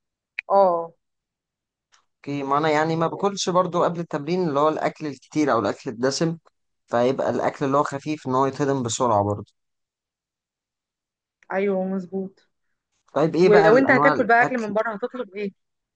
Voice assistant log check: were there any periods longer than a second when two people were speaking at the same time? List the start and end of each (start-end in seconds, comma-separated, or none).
13.4-14.8